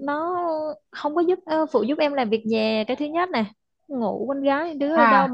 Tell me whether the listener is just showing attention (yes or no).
yes